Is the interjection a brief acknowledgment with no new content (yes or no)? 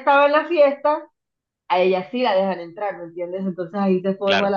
yes